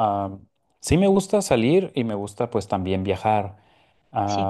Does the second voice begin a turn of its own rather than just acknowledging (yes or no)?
no